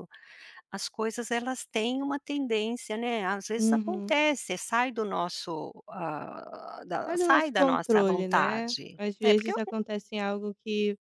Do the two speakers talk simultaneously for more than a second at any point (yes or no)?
yes